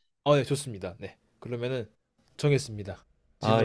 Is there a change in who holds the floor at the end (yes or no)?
yes